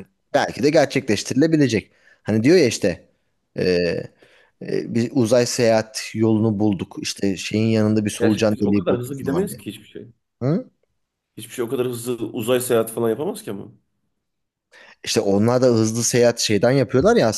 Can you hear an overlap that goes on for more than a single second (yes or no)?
yes